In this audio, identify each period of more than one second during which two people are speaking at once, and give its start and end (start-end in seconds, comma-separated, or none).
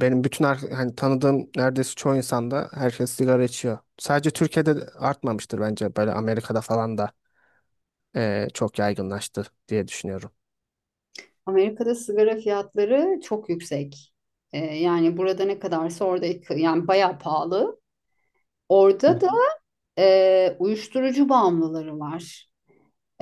none